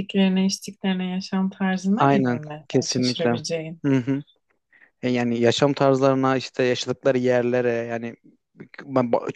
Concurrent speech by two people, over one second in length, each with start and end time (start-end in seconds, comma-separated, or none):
2.0-3.4